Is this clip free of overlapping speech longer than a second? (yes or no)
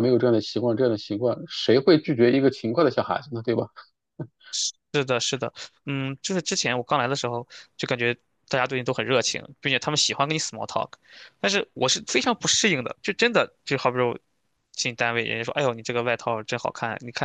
yes